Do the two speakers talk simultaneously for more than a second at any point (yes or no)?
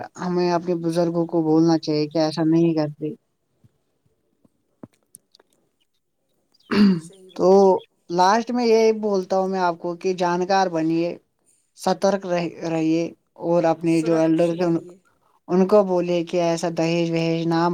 no